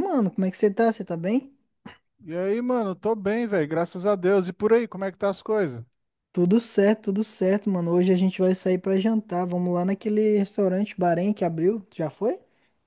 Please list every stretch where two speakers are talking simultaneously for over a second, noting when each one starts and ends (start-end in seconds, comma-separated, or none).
none